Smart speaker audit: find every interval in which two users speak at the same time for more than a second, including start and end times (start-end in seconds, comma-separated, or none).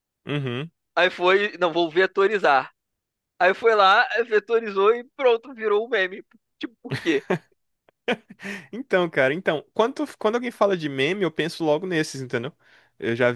none